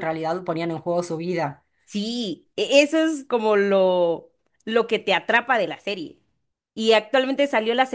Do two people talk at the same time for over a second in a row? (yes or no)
no